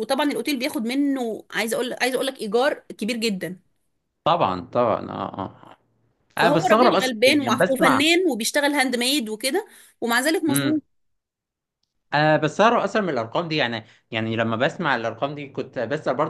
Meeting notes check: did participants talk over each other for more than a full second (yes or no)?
yes